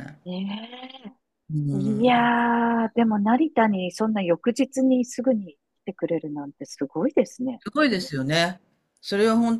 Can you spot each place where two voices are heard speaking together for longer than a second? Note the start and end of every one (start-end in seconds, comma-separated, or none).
none